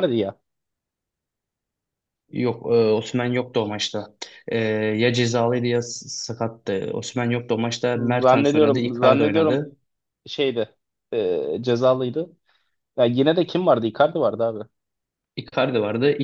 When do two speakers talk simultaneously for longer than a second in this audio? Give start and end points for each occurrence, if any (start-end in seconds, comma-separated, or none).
7.9-9.7